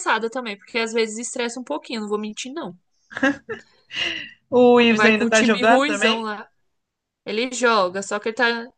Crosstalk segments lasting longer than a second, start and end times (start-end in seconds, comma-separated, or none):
4.7-6.2